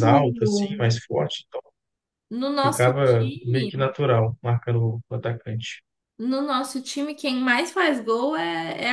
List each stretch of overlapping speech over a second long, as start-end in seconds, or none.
2.6-3.9